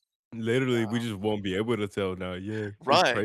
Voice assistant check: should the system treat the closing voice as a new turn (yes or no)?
yes